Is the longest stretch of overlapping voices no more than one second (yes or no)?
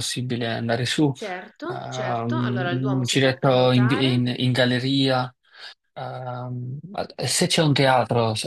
no